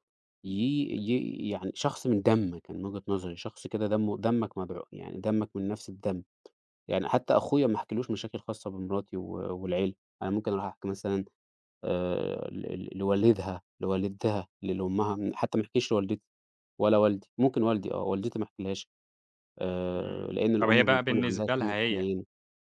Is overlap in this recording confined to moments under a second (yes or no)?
no